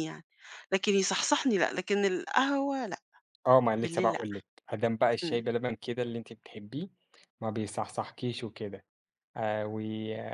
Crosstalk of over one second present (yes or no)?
no